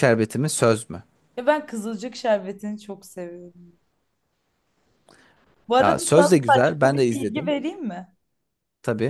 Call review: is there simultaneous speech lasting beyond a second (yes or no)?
yes